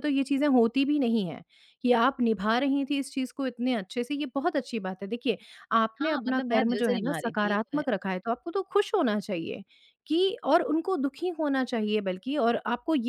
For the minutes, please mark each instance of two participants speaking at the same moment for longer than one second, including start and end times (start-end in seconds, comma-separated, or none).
6.0-7.8